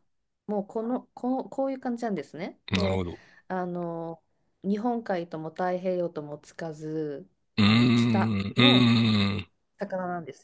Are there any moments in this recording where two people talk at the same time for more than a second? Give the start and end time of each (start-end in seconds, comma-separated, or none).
7.6-8.9